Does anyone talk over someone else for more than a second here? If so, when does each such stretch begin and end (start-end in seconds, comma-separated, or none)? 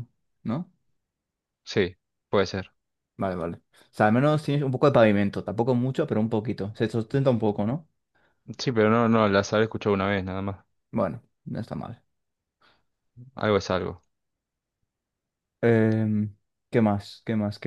none